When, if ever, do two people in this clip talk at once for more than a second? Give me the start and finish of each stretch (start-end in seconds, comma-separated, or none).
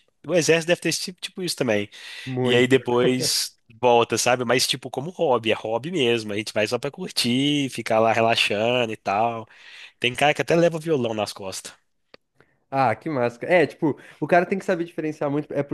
none